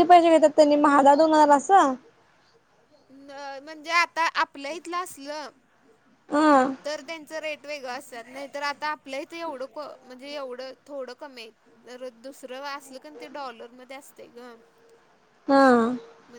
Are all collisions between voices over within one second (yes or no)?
yes